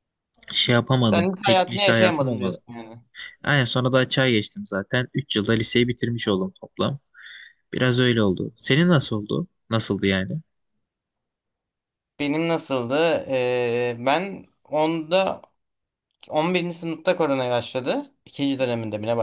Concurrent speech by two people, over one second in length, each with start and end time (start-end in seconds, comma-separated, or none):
1.1-2.6